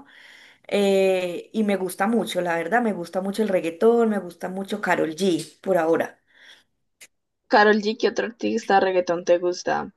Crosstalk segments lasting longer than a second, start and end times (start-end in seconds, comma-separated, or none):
none